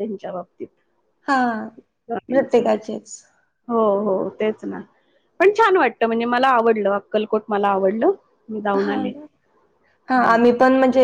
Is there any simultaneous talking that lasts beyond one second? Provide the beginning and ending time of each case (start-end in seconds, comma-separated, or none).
none